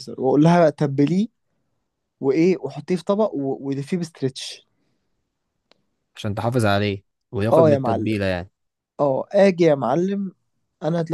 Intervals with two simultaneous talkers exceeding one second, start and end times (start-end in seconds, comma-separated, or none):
none